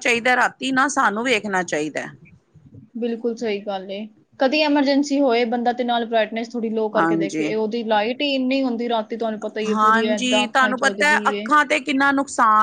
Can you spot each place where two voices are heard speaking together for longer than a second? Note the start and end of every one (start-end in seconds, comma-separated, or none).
9.7-11.5